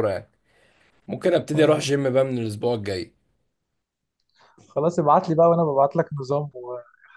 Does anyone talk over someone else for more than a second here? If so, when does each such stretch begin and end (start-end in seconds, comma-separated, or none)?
none